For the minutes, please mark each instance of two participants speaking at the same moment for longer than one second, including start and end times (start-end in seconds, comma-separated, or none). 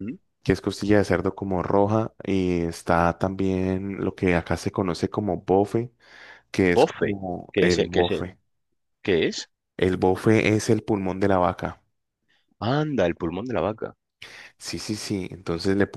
6.7-8.3